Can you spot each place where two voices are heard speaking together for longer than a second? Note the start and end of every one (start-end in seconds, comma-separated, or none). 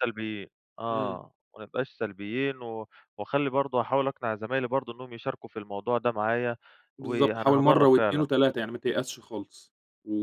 7.0-8.3